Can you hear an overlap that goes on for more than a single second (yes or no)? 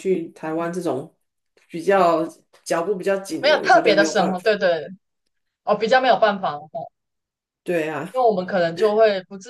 yes